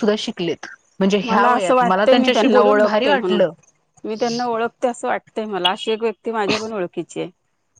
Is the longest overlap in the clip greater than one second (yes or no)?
yes